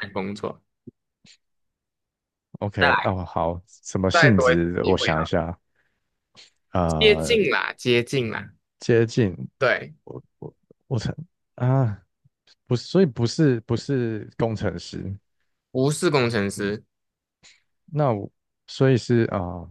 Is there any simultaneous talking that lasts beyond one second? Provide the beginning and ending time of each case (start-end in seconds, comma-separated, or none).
4.1-5.3